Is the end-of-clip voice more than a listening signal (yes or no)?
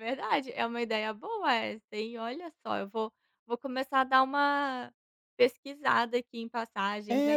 yes